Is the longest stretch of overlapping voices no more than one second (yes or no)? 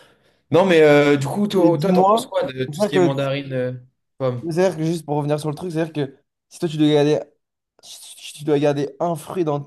no